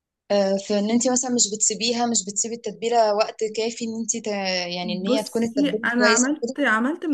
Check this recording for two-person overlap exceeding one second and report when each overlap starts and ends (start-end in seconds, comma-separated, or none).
4.8-6.5